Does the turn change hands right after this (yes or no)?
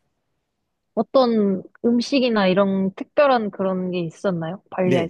yes